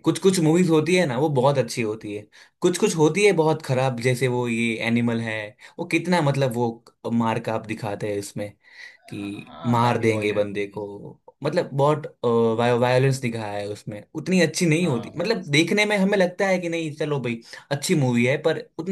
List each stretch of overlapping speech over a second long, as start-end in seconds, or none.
9.2-10.9